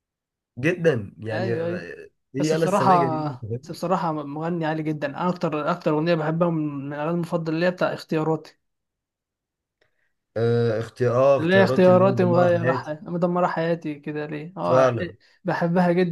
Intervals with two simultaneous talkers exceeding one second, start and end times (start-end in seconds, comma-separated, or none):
2.4-3.8, 11.4-13.0